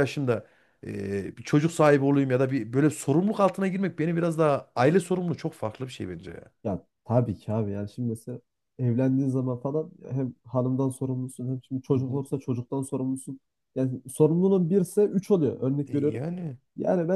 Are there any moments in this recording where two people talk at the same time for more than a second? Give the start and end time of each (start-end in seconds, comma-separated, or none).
none